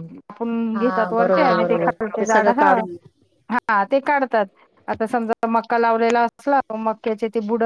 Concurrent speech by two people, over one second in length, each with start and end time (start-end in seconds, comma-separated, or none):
0.8-2.7